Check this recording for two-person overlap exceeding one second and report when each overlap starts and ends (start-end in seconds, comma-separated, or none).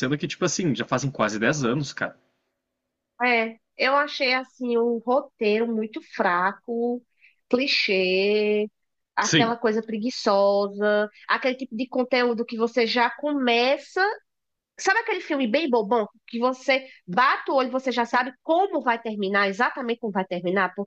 none